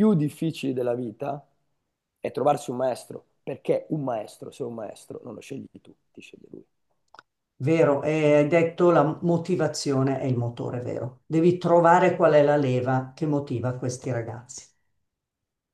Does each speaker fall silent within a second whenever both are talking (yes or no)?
yes